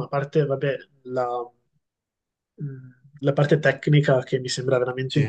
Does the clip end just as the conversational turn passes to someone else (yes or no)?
no